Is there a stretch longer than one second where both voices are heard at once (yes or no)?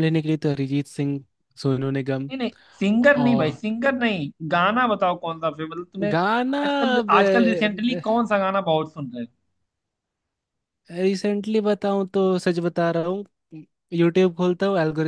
no